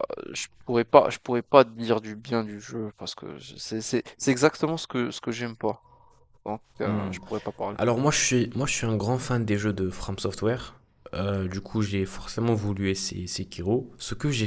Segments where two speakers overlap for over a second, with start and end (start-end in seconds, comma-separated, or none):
none